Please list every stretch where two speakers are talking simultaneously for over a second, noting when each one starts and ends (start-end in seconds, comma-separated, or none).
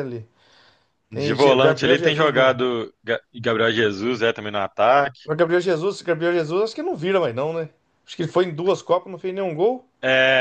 1.1-2.5